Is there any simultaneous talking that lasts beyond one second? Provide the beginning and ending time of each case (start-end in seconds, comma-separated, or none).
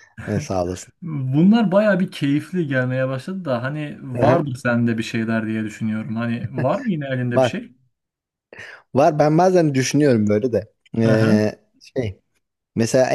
none